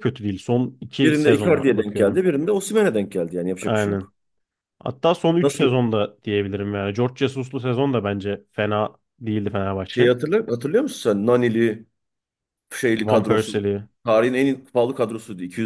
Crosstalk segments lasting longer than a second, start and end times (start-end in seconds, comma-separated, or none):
1.0-2.2